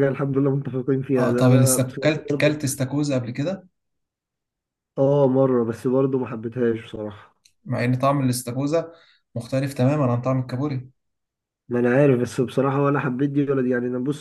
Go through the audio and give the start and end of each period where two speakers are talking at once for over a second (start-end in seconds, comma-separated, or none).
1.2-2.6